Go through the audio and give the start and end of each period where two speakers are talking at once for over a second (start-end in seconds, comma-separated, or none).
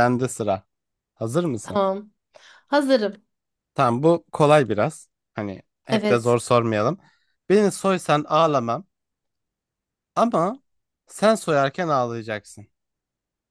none